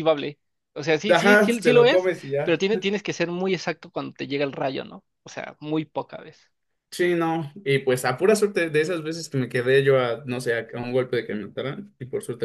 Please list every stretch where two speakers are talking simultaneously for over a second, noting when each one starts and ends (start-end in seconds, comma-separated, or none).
1.1-2.6